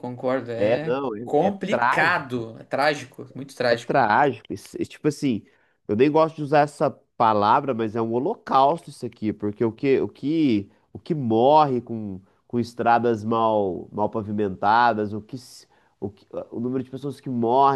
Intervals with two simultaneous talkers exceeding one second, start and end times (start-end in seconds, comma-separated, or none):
0.5-2.5